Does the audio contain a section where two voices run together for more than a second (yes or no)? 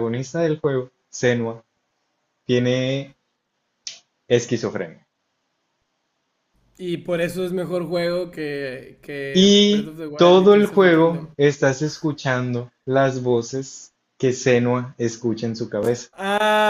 yes